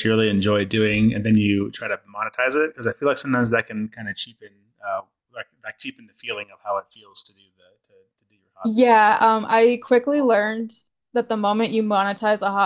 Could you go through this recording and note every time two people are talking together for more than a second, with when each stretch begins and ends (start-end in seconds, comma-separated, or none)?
8.6-10.4